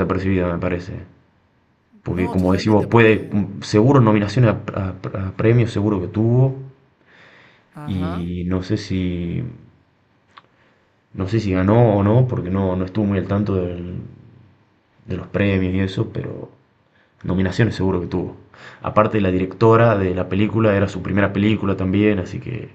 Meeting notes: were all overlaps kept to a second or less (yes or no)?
no